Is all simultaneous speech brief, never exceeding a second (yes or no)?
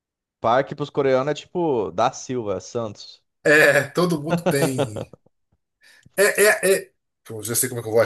yes